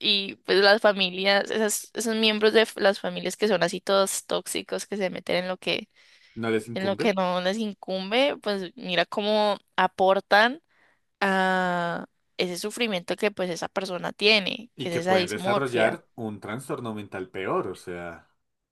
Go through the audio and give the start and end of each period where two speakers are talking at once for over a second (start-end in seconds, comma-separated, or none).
14.7-16.0